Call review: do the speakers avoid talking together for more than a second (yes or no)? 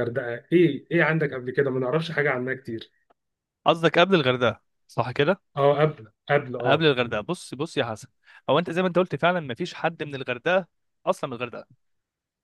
yes